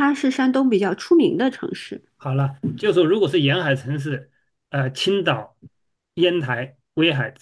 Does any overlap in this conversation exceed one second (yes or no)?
no